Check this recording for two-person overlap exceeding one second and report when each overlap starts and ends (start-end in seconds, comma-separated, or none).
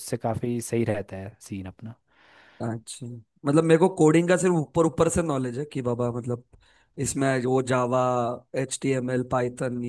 none